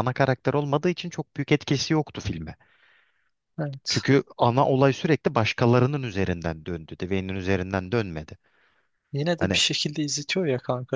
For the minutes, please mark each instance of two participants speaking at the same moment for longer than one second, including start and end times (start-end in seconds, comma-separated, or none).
none